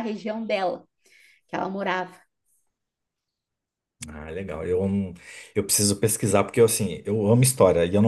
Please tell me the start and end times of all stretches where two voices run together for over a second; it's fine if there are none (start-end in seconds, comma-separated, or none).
none